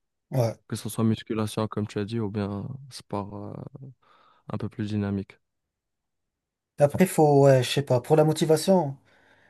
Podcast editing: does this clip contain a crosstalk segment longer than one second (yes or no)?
no